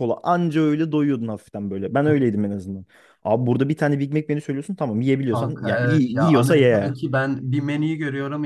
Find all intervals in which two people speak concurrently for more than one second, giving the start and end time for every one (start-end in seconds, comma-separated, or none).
5.3-6.9